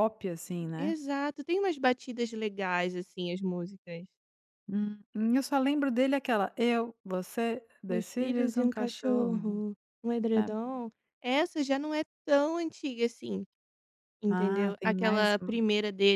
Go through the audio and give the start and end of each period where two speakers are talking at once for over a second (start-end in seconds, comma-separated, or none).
7.9-9.6, 14.3-15.6